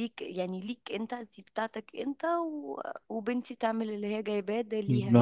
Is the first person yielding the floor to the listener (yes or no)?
yes